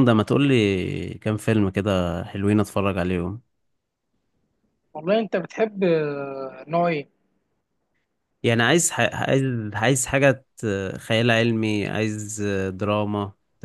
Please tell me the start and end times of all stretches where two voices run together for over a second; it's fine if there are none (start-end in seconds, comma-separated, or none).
none